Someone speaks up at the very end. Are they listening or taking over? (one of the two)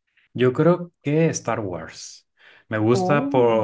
listening